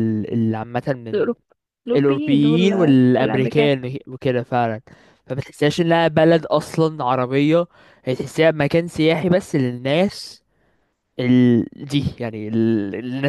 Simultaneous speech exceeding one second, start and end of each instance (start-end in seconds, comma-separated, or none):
1.9-3.7